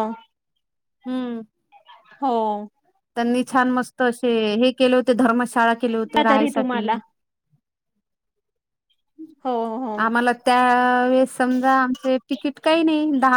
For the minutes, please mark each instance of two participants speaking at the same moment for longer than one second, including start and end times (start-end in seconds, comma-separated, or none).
none